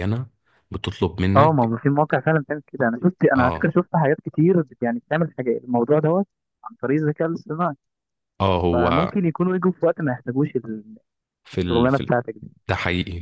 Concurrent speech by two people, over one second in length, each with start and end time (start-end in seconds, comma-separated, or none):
none